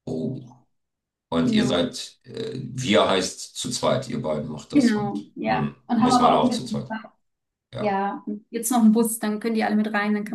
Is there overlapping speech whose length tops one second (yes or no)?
yes